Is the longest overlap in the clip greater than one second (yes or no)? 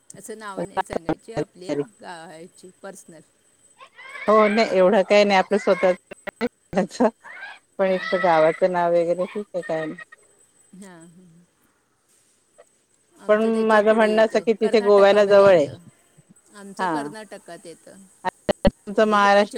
yes